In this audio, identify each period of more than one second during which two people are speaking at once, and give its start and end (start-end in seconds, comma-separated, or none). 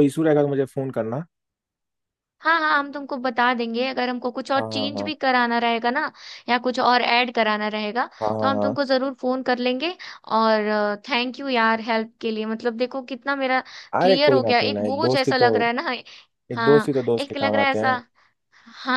14.0-15.5, 16.6-18.0